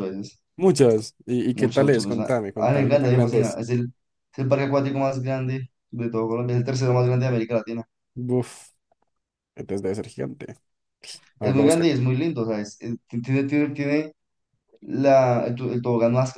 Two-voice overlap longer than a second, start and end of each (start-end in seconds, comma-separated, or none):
1.5-3.6